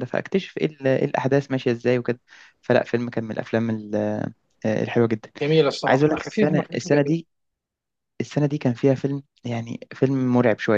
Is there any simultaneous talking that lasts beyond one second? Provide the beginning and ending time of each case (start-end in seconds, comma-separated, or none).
5.9-7.2